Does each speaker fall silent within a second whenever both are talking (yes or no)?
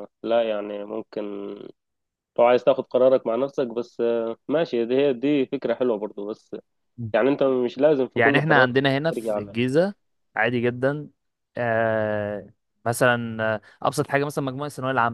no